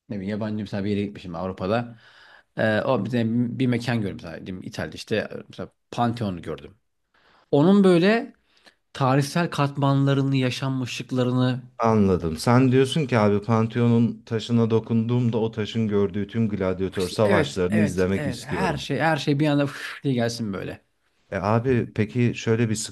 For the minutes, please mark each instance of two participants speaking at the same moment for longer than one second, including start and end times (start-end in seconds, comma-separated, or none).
17.2-18.8